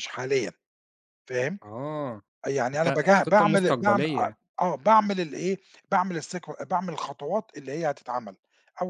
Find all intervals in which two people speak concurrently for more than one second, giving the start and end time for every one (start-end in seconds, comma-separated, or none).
2.7-4.4